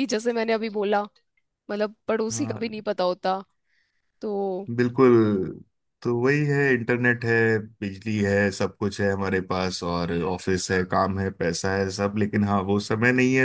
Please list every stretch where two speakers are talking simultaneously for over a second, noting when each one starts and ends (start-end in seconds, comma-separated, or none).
none